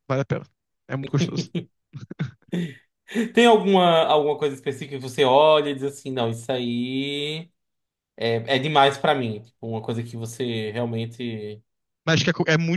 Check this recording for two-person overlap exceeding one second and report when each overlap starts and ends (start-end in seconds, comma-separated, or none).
none